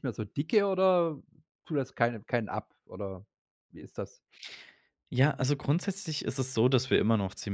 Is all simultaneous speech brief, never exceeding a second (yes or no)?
yes